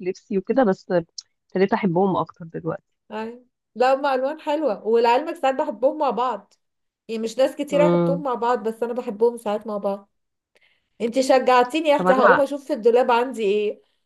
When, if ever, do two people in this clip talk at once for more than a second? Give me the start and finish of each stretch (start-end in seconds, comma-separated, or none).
none